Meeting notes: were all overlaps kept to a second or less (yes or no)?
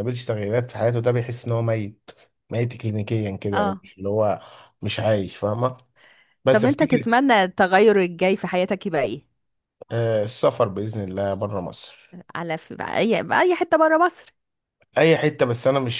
yes